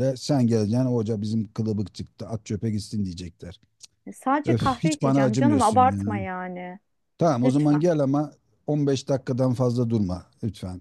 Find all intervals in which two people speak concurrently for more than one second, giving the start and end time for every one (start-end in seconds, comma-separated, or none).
4.5-6.0